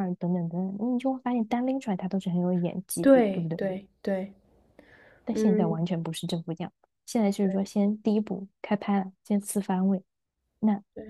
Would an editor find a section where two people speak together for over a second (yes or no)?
no